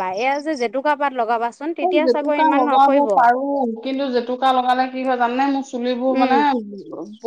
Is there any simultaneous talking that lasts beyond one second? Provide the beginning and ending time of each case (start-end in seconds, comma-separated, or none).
none